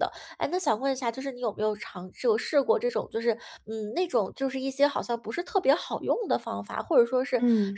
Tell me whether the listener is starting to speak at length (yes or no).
no